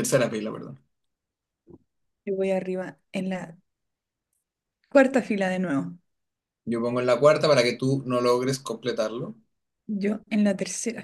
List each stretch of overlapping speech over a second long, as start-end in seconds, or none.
none